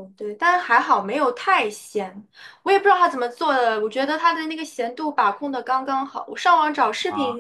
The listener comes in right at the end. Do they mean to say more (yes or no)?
no